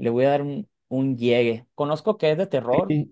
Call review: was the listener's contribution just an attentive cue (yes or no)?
yes